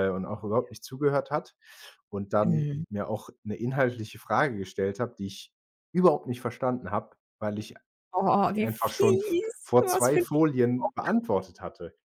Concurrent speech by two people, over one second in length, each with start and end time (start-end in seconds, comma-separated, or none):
8.5-11.1